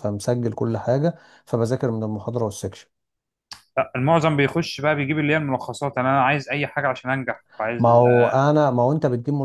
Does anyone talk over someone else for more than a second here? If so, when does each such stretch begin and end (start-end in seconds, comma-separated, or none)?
none